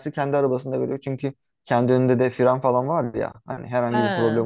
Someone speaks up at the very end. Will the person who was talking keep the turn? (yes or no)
yes